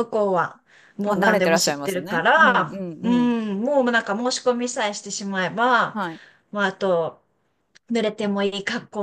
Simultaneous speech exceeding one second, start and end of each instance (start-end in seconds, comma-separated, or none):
1.1-3.3